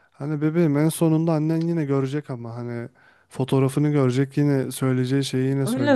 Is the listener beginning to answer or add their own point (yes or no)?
yes